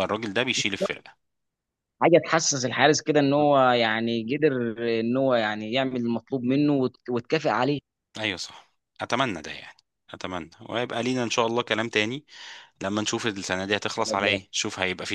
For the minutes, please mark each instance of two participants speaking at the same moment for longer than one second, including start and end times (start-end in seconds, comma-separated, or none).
none